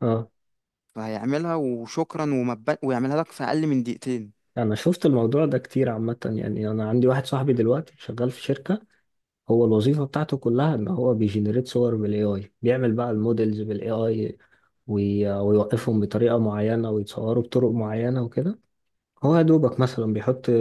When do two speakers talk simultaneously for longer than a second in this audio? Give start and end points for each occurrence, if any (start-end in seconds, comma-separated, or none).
none